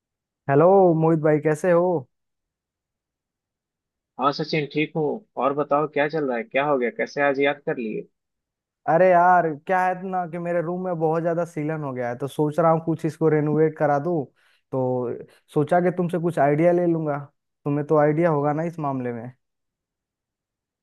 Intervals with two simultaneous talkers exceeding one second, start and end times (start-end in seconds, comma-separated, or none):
none